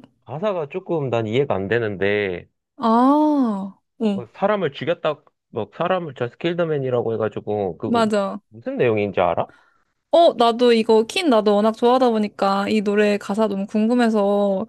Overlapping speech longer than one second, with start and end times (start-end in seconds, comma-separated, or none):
none